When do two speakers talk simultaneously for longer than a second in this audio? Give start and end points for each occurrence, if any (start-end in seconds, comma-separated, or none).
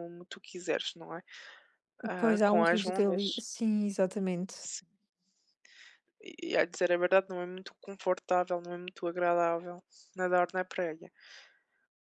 2.2-3.4